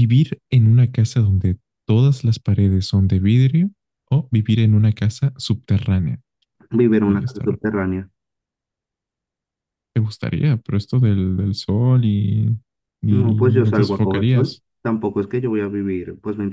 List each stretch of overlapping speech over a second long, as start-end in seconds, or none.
13.1-14.6